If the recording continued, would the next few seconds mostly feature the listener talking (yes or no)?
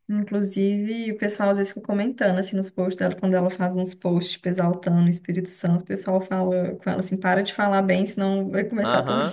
yes